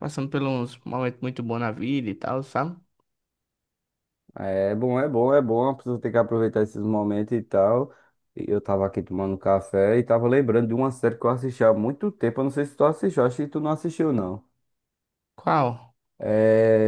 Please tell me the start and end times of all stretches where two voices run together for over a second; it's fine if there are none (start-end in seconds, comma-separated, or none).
none